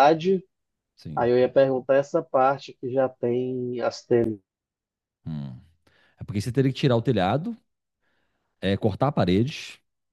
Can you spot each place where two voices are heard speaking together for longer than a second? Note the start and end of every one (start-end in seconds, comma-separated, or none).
none